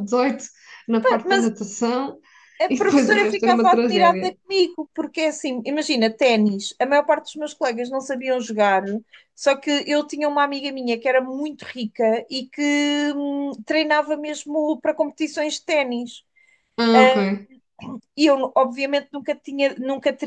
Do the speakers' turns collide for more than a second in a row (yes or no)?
yes